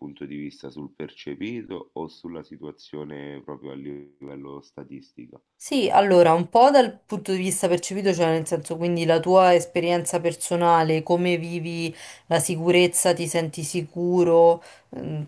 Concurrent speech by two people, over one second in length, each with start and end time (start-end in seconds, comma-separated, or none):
none